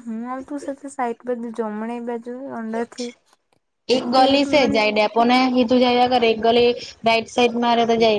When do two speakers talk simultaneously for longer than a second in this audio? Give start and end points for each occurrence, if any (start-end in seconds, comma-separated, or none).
none